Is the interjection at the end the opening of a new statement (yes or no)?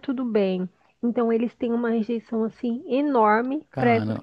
no